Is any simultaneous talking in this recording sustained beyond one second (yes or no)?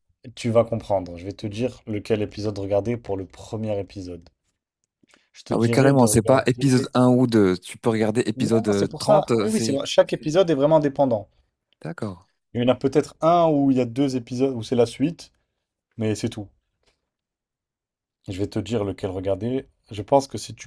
yes